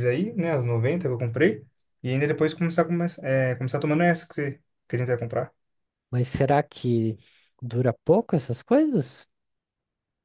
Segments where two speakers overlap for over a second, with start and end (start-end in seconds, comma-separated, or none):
none